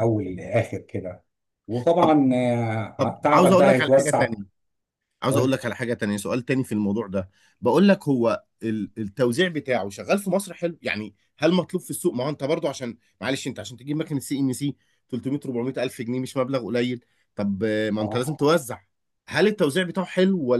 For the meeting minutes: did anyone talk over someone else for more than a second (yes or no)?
yes